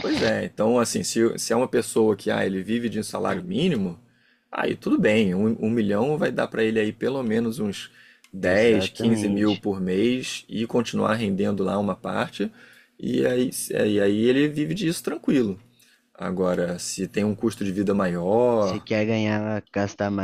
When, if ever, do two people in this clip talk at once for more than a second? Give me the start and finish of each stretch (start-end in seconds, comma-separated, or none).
8.4-9.6